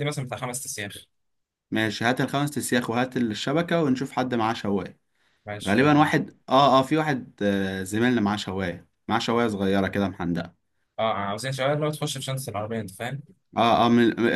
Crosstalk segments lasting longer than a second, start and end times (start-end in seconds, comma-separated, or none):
none